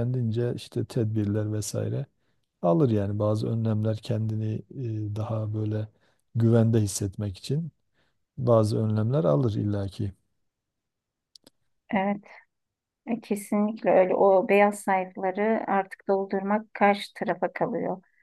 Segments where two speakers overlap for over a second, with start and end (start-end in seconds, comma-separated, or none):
none